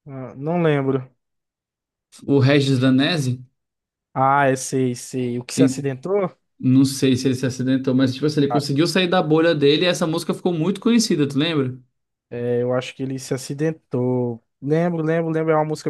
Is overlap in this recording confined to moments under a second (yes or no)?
yes